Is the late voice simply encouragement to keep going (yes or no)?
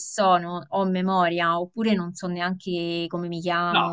no